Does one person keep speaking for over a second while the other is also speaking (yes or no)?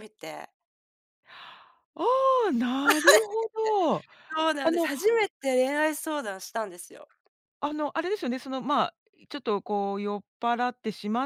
no